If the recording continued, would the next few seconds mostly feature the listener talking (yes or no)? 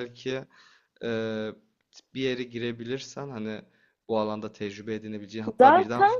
no